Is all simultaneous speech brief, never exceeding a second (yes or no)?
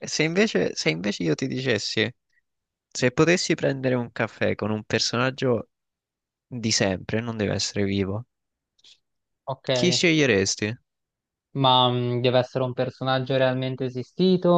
yes